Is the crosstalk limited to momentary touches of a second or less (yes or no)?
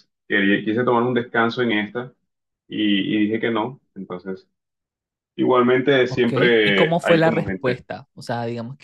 no